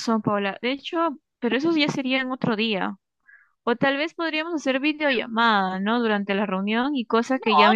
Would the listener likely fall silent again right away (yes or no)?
no